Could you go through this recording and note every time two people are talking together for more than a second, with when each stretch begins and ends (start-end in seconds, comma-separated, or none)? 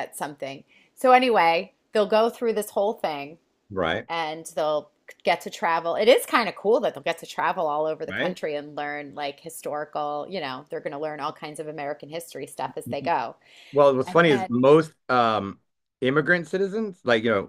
none